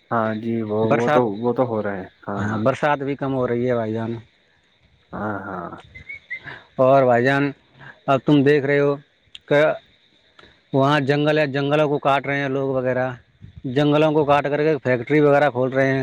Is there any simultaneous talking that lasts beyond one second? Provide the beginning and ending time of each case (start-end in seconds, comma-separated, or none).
none